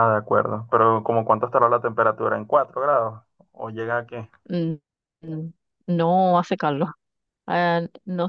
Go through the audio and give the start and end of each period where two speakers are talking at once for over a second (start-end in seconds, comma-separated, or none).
none